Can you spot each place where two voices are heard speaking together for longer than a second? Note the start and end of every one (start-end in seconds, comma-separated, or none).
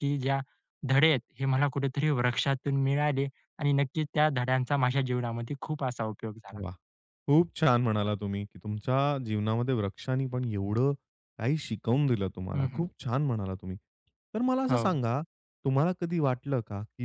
none